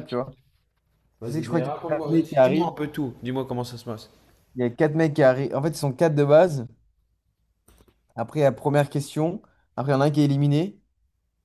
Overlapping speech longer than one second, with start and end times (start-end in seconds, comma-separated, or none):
1.2-2.7